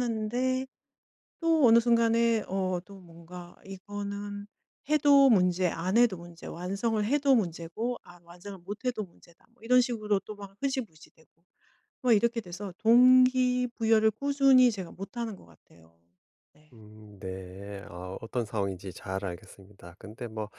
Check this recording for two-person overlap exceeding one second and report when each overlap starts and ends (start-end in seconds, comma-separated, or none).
none